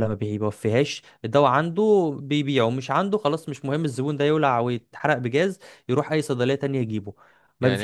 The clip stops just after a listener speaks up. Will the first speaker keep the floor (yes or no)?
no